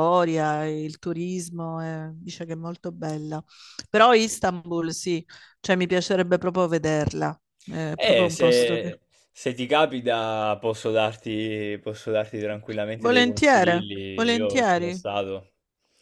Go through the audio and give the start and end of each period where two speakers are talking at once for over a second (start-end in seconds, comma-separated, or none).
12.9-15.0